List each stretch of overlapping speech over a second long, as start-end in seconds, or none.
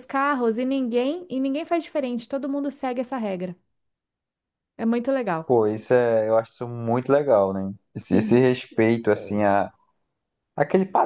none